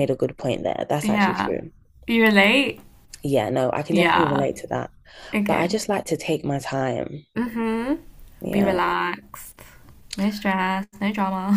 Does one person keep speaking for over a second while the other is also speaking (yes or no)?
no